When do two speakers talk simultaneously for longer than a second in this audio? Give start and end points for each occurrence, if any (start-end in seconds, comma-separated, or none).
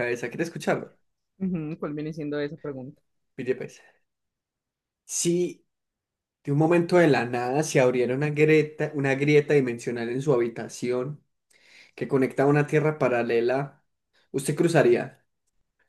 none